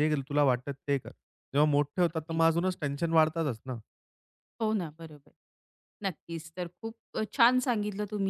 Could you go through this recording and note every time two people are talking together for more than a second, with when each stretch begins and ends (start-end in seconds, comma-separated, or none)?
none